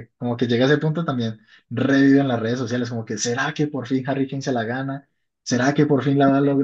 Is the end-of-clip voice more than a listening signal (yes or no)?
yes